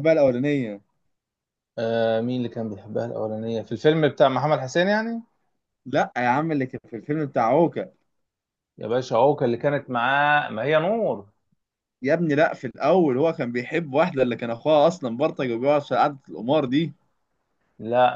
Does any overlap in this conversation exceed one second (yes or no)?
no